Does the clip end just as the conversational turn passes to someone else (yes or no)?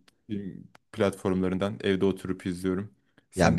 yes